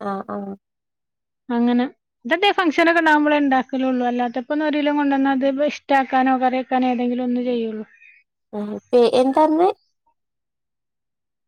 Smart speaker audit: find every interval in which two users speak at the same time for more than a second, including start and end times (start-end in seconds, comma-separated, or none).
none